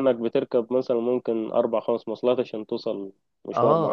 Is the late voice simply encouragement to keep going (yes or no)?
no